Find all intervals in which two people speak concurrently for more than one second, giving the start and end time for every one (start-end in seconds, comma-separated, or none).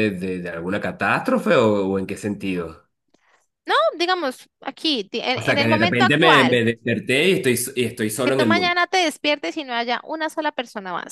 5.3-6.6